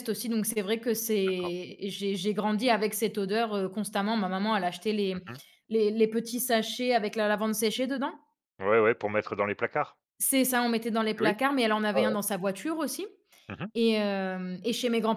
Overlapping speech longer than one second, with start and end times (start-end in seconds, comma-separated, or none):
none